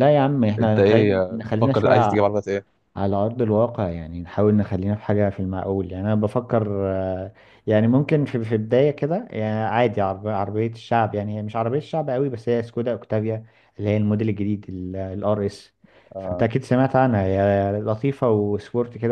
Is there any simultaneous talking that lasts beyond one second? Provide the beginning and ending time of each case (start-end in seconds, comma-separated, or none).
0.6-2.2